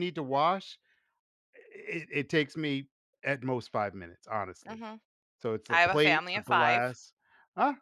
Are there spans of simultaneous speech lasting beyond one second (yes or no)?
yes